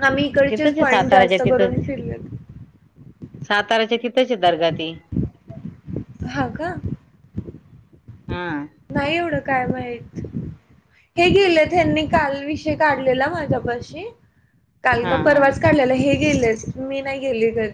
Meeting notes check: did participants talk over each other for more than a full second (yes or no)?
yes